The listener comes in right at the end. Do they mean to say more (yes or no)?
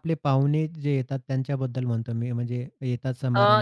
yes